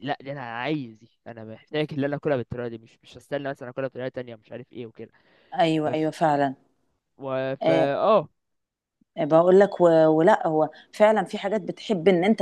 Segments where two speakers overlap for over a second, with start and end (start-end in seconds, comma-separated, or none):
none